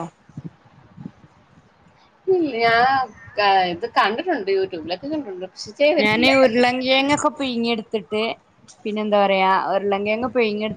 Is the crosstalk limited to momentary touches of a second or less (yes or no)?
yes